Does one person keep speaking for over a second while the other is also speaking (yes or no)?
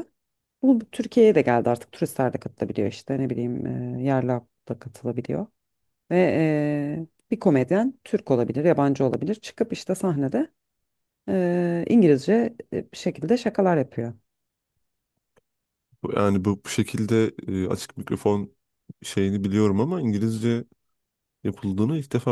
no